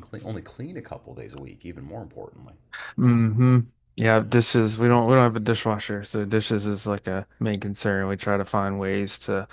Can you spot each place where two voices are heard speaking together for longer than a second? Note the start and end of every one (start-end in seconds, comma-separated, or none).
none